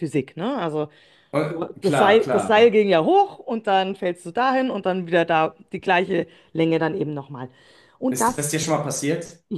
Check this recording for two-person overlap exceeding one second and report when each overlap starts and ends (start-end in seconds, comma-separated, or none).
1.5-2.8